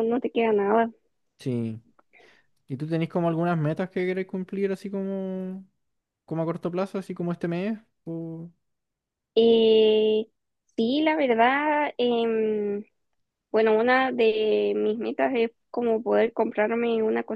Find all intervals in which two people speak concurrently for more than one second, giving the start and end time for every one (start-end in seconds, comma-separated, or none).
none